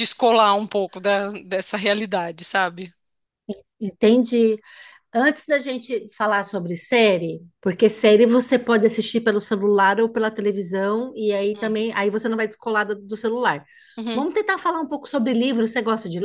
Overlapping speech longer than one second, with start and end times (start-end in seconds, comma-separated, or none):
none